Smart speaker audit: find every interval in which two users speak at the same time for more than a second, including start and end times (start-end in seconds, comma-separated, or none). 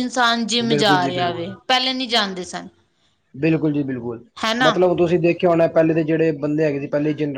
0.7-2.5